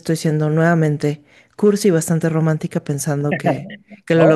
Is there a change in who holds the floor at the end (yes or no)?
yes